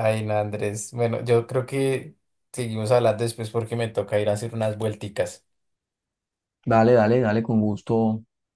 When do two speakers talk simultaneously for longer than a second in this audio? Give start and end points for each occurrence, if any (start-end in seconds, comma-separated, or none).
none